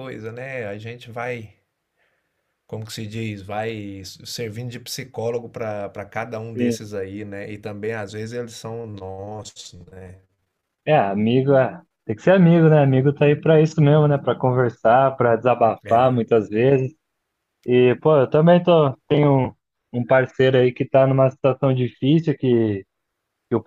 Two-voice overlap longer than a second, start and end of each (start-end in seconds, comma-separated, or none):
none